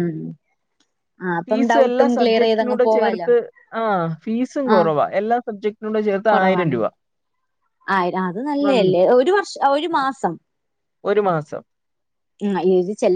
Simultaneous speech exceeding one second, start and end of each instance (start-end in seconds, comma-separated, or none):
1.5-3.3